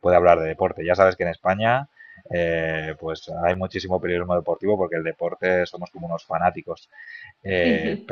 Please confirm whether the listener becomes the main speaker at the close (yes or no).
no